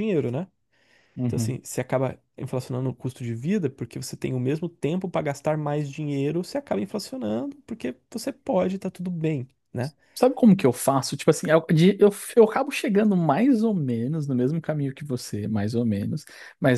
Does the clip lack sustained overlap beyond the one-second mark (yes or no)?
yes